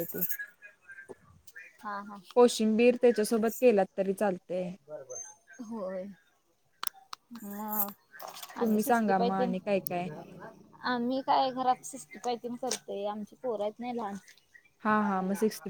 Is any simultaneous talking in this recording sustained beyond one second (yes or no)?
yes